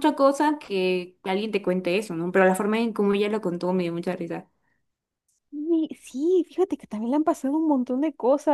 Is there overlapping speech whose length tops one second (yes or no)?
no